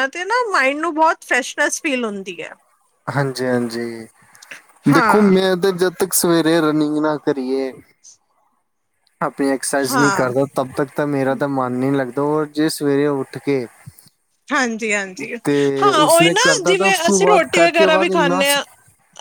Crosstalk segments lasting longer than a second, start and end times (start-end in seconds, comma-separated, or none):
16.1-18.6